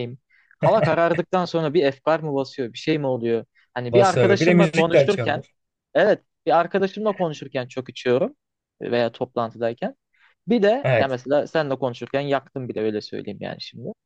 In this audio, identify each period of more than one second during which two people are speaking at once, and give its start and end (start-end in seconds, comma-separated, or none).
3.9-5.4